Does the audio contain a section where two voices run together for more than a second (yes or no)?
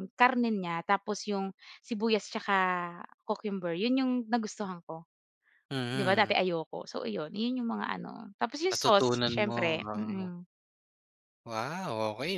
yes